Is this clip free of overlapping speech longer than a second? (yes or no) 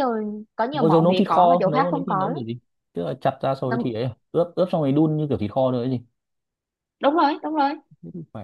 no